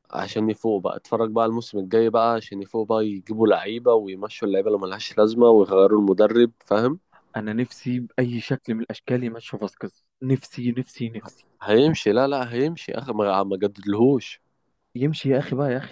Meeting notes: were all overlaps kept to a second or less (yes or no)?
yes